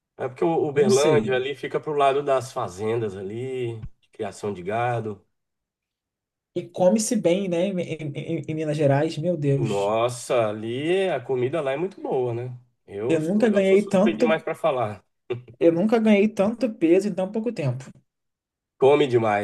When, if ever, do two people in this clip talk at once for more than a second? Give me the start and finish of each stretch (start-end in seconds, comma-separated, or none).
13.1-14.4